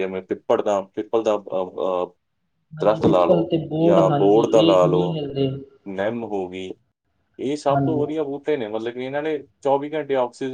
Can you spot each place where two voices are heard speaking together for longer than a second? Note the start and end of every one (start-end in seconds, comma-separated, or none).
2.8-5.2